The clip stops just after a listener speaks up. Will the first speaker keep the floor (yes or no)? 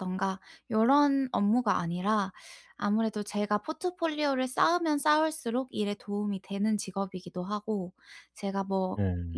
yes